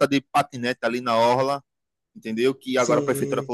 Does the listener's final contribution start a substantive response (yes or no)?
no